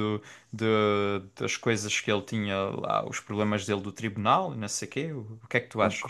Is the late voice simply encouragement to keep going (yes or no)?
no